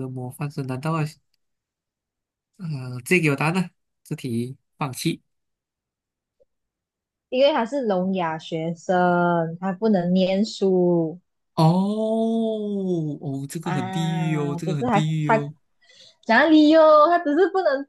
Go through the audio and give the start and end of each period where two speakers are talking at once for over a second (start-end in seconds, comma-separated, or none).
13.6-15.5